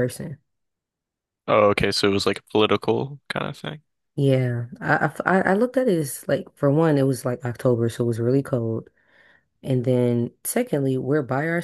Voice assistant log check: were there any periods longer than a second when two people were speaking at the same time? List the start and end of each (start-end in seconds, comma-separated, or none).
none